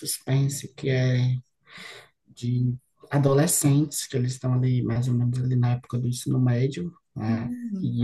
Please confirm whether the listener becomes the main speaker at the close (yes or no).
no